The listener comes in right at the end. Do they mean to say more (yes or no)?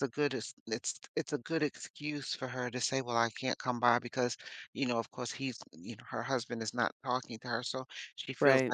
no